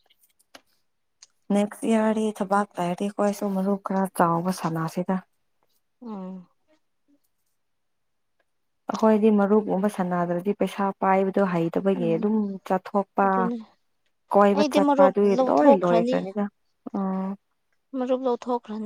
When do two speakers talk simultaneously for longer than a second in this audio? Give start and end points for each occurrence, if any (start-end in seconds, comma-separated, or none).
14.6-16.2